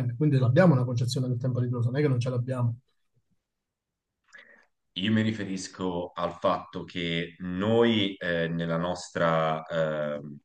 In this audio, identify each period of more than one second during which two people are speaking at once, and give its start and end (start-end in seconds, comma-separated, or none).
none